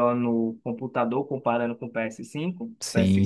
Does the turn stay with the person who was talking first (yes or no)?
no